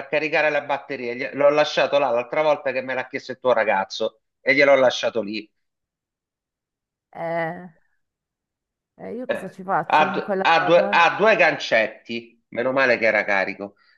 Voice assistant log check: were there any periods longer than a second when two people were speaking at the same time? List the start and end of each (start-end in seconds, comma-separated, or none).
9.3-11.0